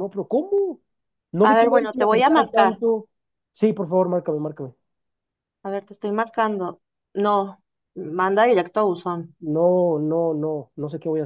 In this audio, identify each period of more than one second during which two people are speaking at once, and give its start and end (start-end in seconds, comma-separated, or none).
1.4-2.8